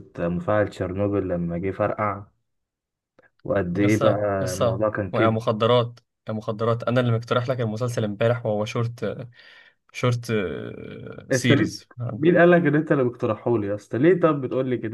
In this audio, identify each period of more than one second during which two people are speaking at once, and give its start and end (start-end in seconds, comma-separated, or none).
3.8-5.4